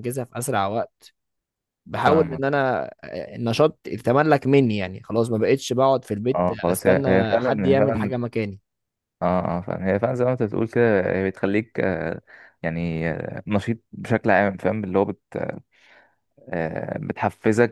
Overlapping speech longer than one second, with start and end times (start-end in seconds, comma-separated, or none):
6.3-8.1